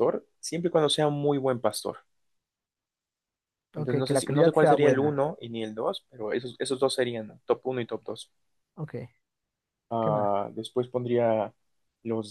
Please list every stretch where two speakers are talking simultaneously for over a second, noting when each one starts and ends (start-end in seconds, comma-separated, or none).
3.8-5.2